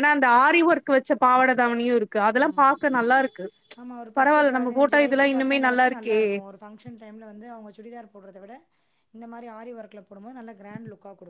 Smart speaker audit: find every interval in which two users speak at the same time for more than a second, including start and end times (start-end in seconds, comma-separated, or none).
4.2-6.2